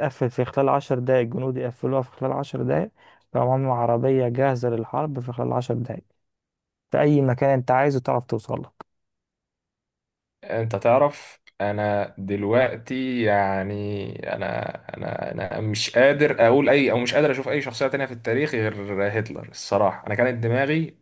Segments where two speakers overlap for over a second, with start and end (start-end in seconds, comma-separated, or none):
none